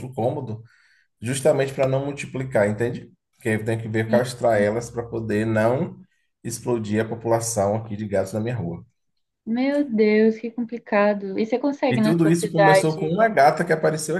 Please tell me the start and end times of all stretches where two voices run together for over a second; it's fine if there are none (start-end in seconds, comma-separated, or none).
11.9-13.2